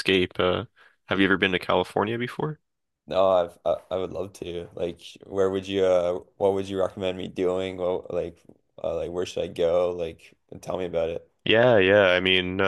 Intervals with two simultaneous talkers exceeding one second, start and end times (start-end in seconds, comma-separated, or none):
none